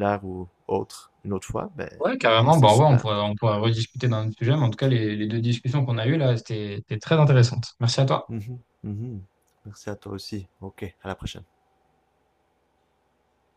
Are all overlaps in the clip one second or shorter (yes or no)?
yes